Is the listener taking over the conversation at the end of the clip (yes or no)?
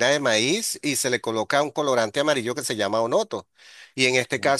no